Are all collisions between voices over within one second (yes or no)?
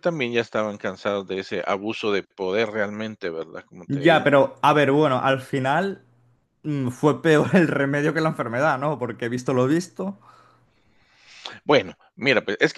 yes